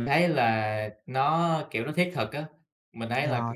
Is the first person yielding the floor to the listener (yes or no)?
no